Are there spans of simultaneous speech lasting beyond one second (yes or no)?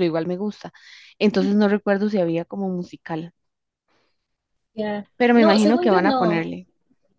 yes